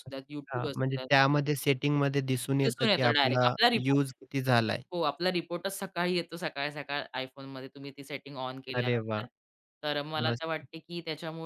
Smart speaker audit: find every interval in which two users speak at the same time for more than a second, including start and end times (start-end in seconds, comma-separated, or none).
2.6-4.1